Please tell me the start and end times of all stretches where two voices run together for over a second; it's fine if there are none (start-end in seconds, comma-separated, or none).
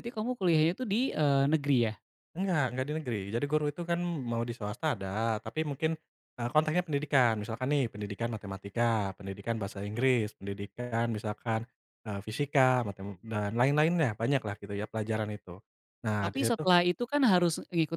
none